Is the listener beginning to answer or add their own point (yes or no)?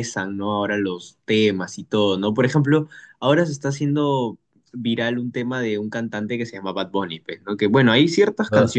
no